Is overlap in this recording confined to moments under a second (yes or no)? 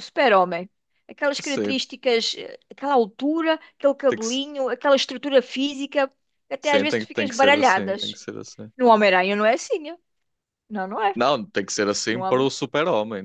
no